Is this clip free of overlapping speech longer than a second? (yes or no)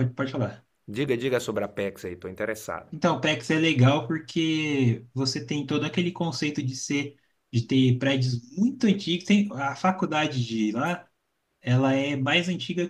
yes